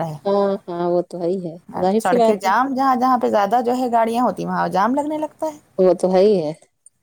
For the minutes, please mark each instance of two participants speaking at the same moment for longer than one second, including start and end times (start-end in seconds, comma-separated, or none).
none